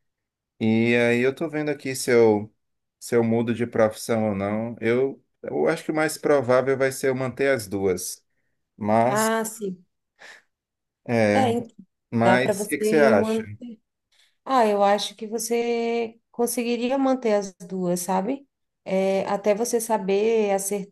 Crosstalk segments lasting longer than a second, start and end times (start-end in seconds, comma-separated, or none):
12.2-13.4